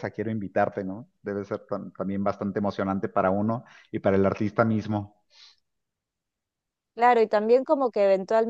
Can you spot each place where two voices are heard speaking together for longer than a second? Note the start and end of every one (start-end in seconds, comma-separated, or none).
none